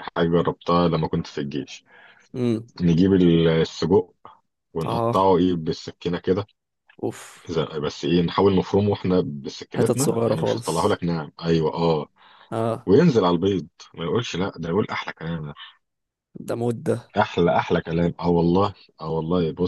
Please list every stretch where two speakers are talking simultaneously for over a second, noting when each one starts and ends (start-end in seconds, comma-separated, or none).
9.7-11.0